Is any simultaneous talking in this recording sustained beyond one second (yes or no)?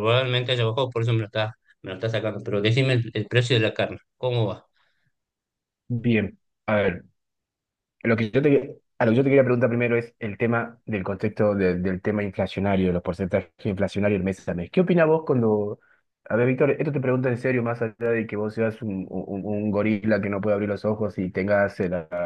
no